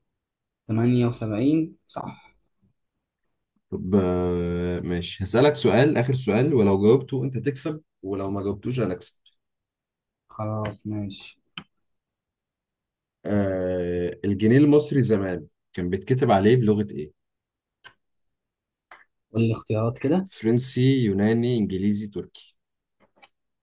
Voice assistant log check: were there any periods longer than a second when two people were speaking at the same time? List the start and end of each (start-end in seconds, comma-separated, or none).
none